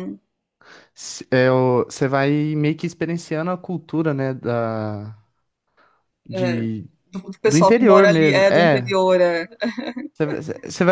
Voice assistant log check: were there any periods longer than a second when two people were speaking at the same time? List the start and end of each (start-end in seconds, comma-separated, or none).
7.5-8.9